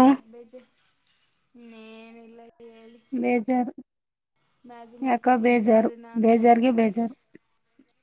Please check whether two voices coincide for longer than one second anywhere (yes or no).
yes